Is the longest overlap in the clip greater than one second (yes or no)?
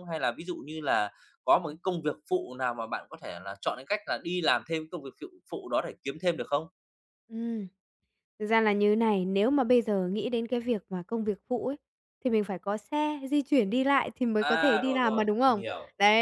yes